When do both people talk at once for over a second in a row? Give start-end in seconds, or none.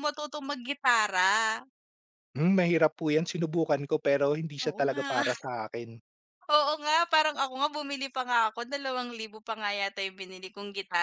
none